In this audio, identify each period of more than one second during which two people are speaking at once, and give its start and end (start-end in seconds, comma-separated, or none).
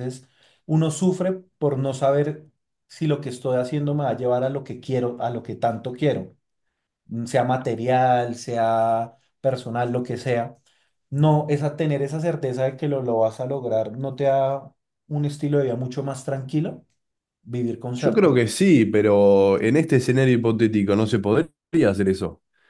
none